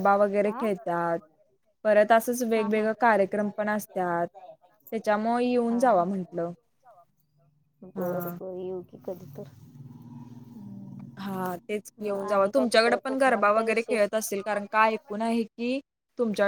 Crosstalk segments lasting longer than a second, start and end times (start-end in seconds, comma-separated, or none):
12.6-14.1